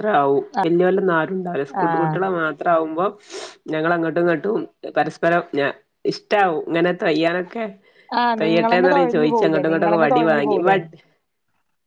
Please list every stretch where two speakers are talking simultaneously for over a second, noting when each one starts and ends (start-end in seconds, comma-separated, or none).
8.4-10.8